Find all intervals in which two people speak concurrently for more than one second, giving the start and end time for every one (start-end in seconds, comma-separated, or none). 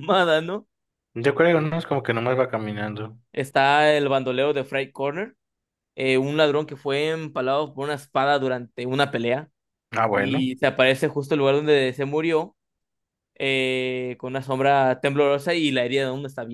none